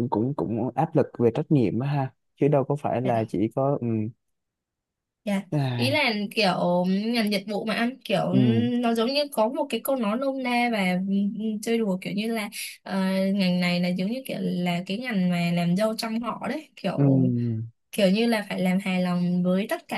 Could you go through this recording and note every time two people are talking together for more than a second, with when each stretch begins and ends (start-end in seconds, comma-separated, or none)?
none